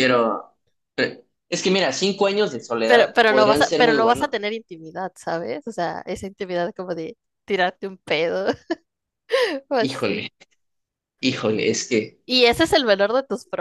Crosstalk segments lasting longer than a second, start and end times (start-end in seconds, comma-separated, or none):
2.9-4.3